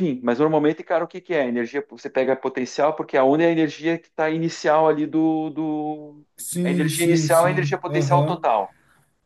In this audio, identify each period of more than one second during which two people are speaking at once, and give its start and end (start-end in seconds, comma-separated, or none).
6.7-8.4